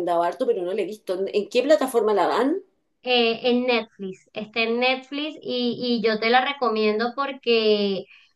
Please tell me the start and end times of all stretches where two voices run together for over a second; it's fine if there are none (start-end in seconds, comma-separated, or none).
none